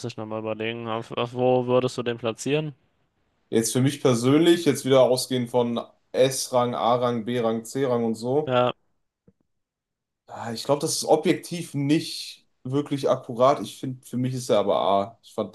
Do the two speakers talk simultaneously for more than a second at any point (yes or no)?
no